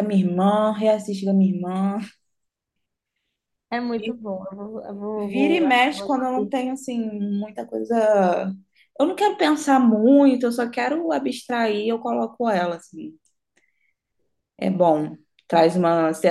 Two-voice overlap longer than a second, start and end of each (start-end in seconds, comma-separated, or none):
5.2-6.5